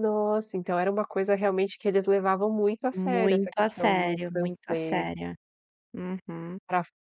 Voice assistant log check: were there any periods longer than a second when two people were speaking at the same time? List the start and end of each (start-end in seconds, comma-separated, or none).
2.9-5.2